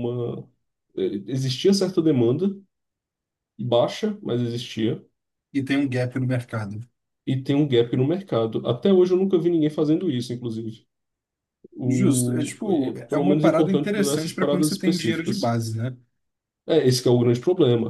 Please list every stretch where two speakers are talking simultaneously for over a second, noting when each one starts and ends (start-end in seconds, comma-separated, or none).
11.8-15.6